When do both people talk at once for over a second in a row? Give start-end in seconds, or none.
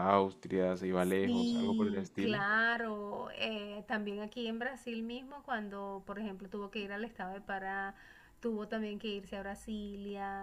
1.0-2.4